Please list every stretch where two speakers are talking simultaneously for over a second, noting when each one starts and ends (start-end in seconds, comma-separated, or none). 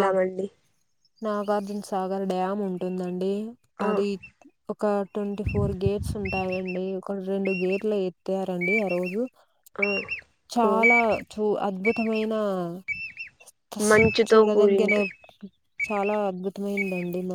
none